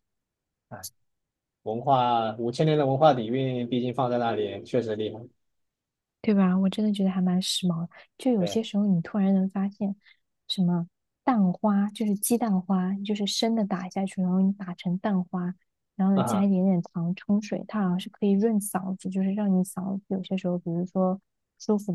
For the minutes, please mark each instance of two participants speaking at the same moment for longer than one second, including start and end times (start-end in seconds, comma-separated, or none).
none